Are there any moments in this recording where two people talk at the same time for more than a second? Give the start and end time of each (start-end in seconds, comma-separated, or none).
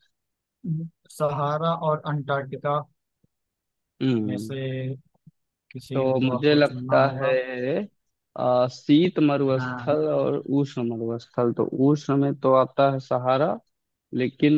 5.9-7.3